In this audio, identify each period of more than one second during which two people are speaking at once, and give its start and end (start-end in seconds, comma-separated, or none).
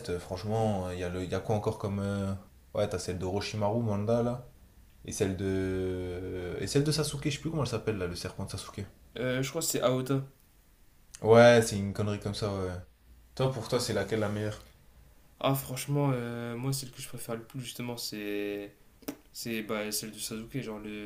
none